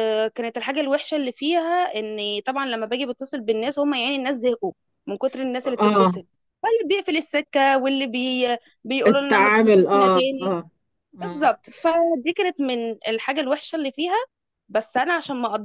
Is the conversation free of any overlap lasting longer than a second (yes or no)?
no